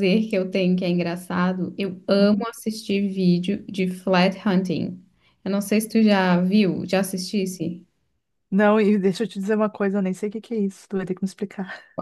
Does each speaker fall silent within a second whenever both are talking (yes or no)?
yes